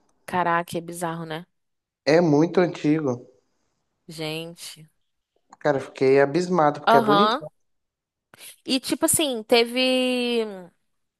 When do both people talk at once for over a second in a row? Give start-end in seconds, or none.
none